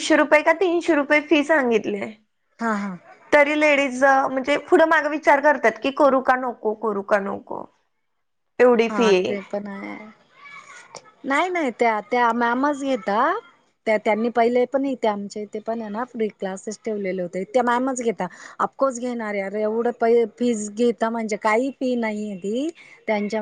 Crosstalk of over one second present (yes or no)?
no